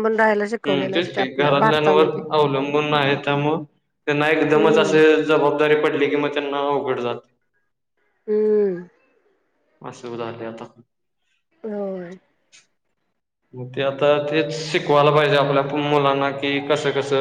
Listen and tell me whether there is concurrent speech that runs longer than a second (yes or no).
no